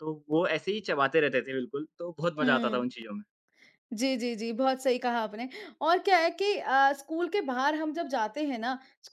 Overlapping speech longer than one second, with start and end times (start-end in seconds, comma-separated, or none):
none